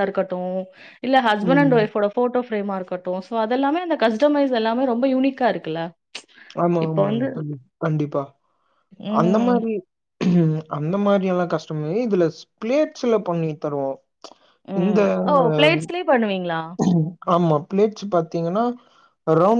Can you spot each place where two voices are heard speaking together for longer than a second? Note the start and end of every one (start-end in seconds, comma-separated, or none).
none